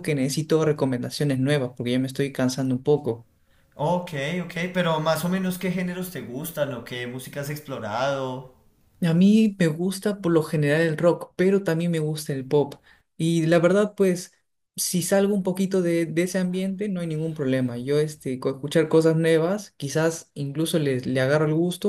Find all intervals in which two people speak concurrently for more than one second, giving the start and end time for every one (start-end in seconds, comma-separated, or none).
none